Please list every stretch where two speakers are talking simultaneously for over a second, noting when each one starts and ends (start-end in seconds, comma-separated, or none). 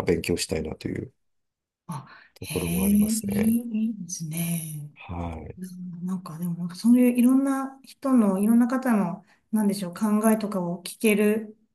2.3-3.5